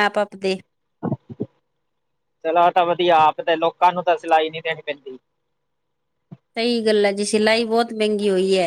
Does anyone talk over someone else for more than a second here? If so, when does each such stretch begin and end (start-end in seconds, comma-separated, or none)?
none